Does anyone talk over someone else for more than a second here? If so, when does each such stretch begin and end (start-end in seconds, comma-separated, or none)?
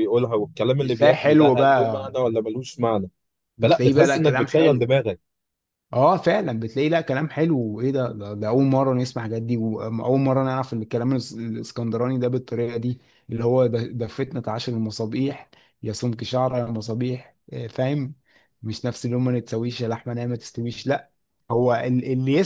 0.8-2.1, 3.6-4.9